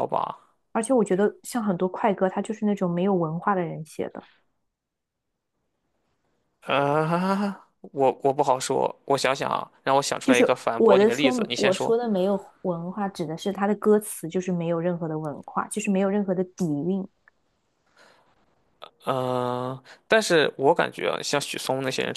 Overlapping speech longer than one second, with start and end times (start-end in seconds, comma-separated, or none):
10.2-11.9